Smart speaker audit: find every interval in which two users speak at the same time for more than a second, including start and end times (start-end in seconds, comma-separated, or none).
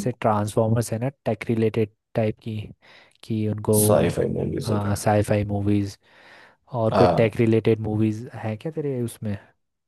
none